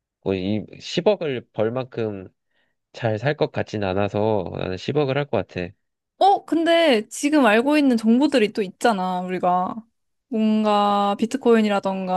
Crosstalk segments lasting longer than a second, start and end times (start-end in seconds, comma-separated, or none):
none